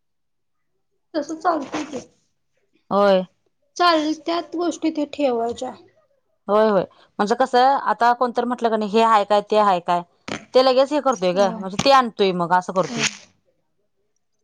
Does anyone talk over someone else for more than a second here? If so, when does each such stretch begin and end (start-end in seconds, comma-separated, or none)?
none